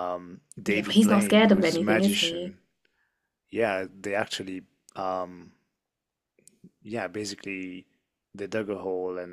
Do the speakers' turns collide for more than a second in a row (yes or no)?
yes